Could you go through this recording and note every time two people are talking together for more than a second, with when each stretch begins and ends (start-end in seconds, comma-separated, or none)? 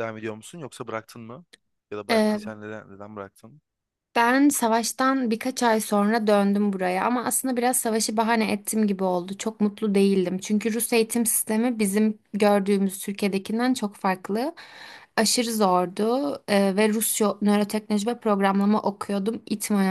none